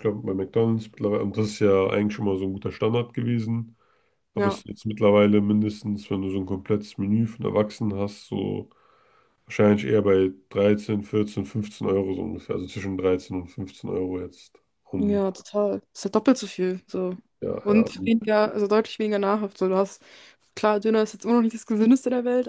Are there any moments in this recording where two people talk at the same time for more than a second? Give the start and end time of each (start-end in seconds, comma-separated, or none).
none